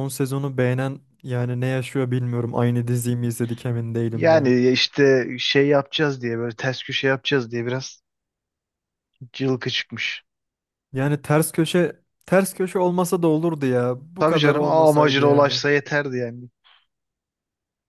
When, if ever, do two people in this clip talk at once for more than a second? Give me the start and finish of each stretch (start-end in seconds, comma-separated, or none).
14.2-15.6